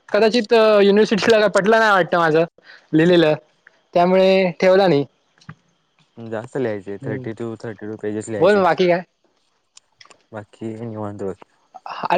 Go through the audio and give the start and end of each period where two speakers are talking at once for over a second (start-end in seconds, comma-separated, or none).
none